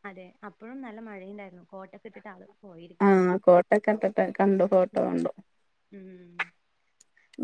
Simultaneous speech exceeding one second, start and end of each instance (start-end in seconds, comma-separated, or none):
none